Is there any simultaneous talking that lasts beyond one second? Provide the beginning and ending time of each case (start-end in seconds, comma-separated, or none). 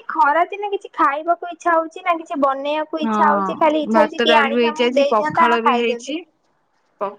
3.0-6.2